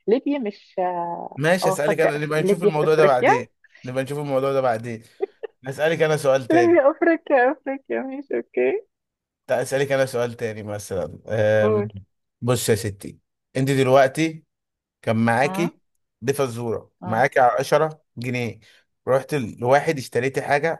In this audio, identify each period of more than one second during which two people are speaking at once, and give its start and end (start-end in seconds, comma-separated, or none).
1.4-3.3